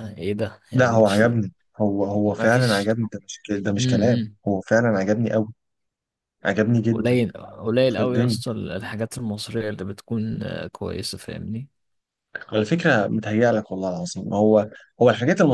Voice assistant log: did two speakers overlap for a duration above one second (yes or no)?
no